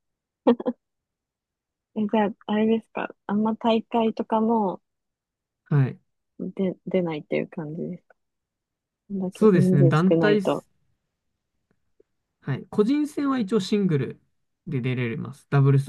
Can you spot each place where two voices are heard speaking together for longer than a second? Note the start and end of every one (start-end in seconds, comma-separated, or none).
9.3-10.7